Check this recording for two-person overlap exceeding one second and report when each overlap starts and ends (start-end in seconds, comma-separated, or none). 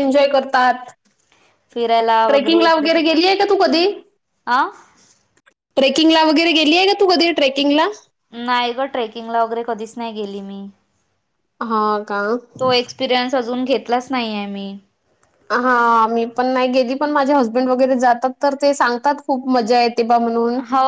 none